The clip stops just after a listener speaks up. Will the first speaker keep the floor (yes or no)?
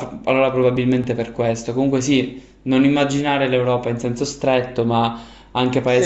yes